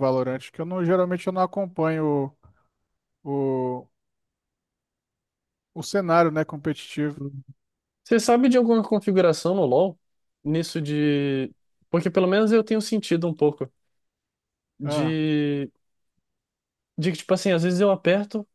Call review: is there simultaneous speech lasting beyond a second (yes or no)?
no